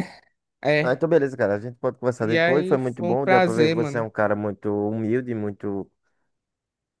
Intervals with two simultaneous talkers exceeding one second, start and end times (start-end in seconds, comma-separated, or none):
2.2-4.1